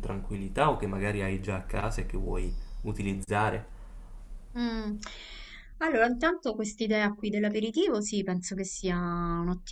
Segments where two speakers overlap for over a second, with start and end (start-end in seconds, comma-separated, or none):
none